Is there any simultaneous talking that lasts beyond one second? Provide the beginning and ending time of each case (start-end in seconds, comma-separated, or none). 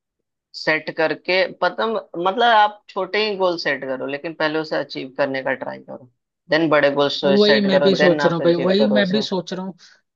7.2-9.2